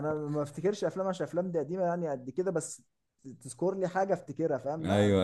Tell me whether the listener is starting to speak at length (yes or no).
yes